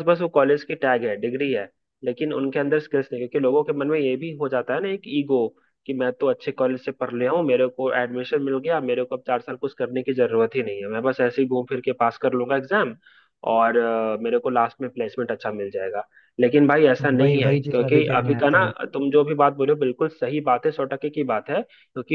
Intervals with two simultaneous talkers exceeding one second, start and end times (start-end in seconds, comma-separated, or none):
17.2-18.7